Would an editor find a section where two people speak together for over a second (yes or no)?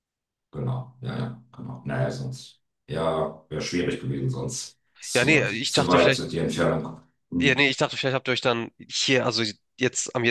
yes